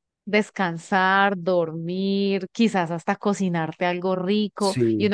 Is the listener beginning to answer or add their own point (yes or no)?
no